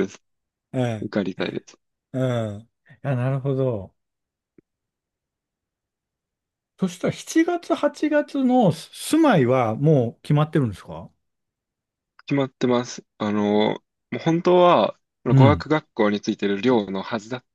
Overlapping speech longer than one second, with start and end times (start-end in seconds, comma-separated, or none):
none